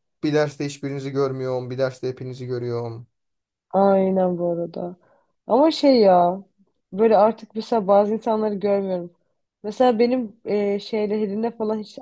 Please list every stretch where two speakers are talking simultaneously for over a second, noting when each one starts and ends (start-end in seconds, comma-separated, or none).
none